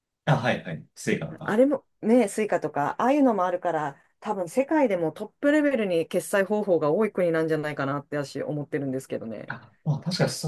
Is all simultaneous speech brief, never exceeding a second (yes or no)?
yes